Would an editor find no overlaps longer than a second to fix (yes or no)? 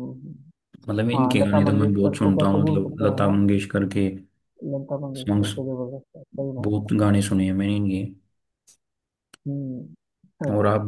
no